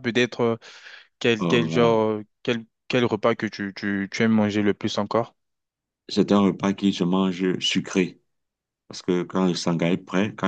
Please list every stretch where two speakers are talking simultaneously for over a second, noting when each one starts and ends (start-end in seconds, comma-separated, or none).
none